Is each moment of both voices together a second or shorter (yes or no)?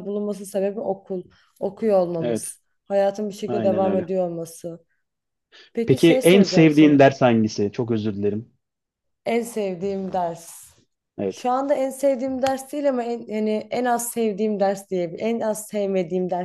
no